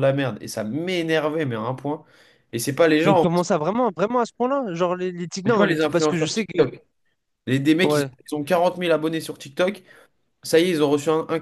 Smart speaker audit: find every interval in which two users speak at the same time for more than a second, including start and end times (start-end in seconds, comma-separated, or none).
5.5-6.7